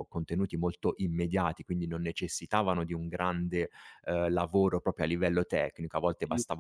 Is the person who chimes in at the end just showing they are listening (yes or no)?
yes